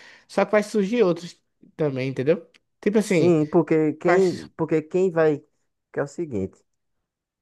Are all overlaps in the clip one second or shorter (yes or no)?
yes